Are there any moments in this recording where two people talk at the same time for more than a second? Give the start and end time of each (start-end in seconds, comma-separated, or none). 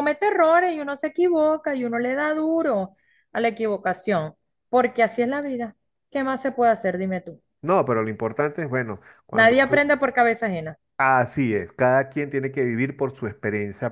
none